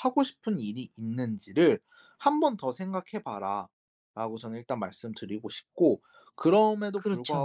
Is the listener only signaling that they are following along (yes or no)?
yes